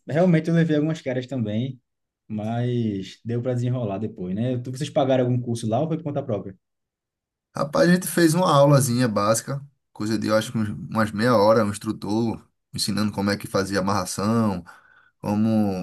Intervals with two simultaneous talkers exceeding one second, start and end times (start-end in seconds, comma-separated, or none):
none